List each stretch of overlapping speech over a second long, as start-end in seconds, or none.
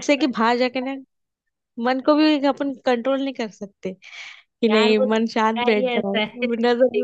4.7-6.2